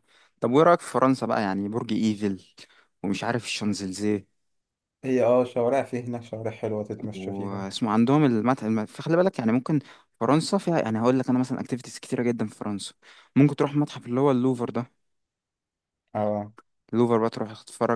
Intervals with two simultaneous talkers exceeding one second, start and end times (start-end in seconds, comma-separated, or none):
none